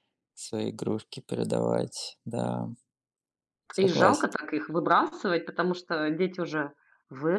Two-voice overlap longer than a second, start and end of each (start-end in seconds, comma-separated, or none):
none